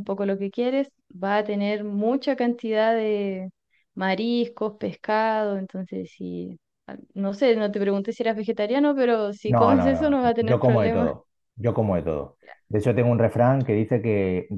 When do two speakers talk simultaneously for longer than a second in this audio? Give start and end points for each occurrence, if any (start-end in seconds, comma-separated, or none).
9.4-11.1